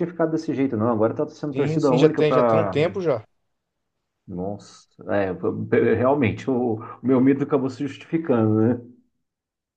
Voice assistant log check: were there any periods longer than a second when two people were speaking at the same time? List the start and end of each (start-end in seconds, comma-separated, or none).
1.5-2.8